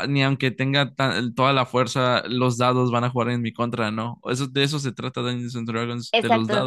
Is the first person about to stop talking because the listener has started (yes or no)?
yes